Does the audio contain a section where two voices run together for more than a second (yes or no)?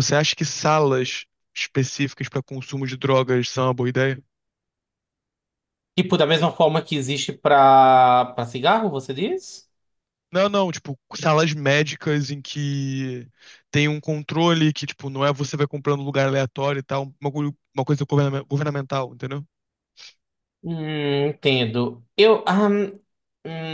no